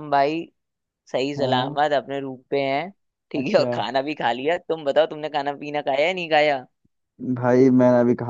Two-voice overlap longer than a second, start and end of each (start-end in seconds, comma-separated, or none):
none